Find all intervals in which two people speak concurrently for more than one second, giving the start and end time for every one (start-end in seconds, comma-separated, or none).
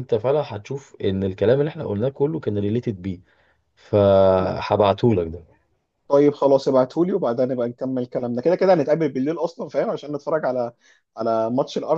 none